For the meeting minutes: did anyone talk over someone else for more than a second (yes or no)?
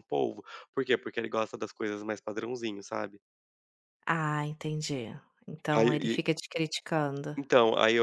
no